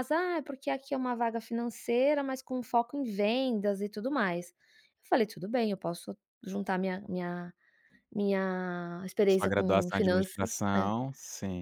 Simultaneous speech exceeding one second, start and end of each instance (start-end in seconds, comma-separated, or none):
9.3-10.6